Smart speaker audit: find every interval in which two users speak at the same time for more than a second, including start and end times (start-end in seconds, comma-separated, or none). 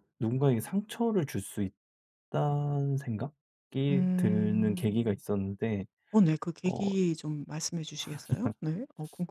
3.9-5.2